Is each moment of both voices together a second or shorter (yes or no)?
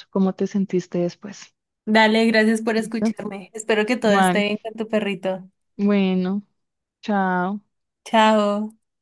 yes